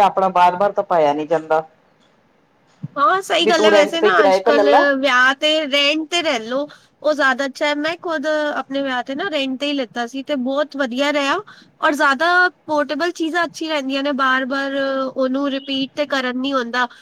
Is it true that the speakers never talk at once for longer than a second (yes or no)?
no